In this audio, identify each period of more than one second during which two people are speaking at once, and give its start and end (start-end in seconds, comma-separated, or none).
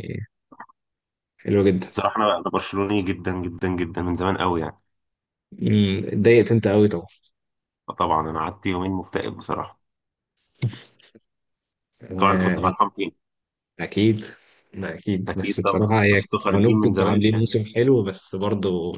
15.3-17.5